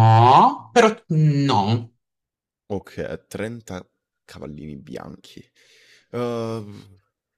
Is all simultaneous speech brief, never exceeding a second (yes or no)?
yes